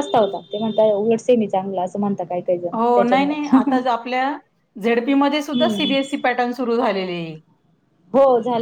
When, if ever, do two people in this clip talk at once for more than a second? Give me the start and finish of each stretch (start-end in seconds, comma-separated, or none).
none